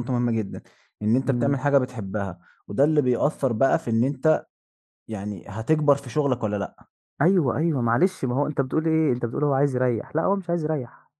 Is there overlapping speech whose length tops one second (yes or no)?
no